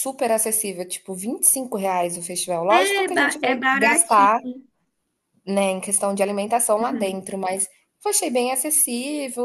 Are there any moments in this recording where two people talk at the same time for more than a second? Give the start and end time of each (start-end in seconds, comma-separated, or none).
2.7-4.4